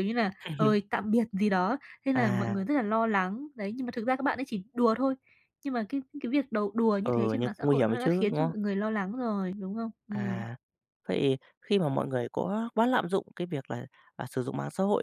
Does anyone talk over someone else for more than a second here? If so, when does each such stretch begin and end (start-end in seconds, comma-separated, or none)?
7.0-8.5